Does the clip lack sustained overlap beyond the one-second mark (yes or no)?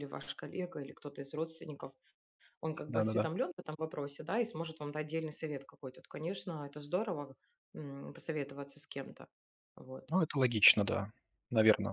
yes